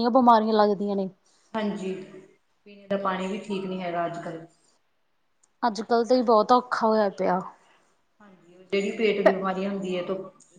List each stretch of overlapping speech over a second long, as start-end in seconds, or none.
none